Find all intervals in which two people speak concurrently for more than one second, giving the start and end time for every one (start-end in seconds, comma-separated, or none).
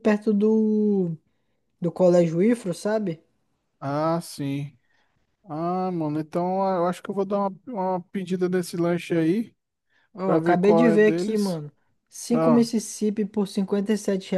10.2-11.6